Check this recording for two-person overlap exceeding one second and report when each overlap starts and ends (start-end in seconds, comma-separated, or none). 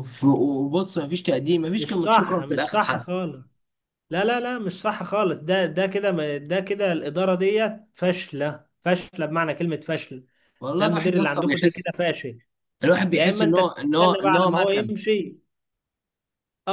1.8-3.0, 10.8-12.0, 13.1-14.9